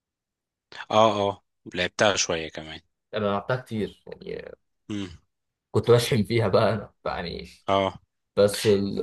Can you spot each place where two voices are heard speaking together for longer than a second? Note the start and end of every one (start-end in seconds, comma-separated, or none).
none